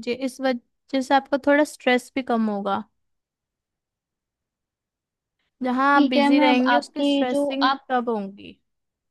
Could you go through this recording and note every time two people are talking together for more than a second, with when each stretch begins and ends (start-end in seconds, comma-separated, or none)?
5.9-7.8